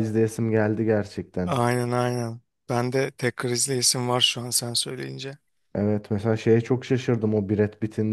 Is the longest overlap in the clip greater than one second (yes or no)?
no